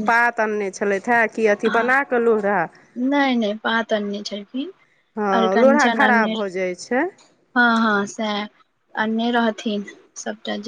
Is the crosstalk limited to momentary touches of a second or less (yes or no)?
no